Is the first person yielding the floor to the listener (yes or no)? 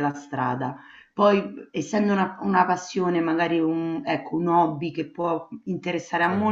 no